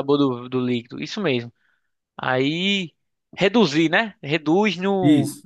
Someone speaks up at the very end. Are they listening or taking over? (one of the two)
listening